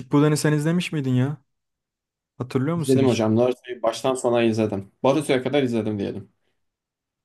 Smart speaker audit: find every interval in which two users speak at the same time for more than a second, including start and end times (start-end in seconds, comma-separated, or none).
none